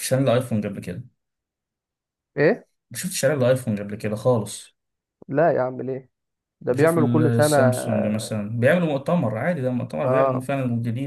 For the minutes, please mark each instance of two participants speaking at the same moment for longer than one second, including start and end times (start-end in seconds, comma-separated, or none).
6.7-8.3